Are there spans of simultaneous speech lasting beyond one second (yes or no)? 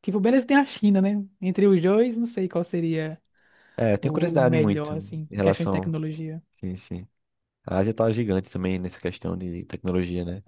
yes